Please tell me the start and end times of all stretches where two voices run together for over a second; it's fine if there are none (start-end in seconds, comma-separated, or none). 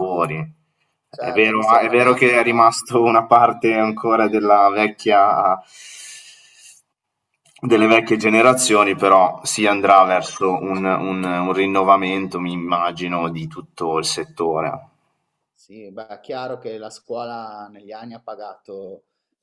1.2-2.7